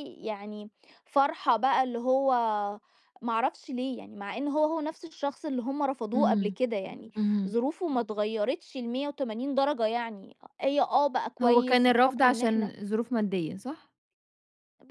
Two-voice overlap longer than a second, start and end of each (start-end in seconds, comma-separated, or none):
11.4-12.7